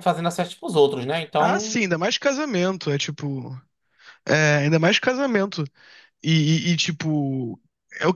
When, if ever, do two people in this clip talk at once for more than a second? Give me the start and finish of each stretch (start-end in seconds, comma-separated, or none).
none